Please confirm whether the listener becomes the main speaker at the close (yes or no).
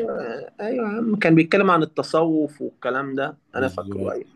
no